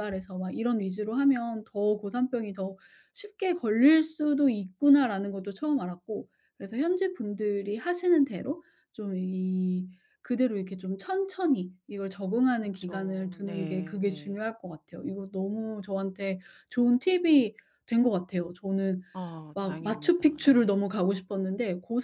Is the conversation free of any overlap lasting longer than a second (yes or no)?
no